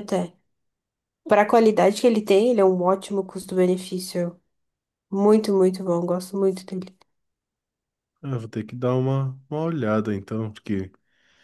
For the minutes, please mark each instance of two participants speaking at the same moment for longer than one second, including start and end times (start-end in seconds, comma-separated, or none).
none